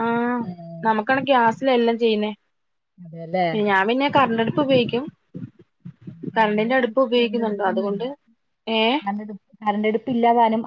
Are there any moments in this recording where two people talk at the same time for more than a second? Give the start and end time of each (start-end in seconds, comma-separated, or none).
6.4-8.1